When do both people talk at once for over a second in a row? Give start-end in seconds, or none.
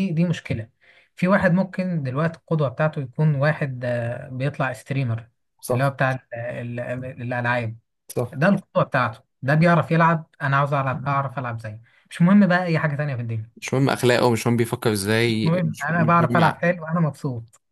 15.2-16.6